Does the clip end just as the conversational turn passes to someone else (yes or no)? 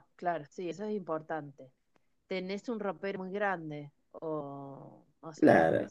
yes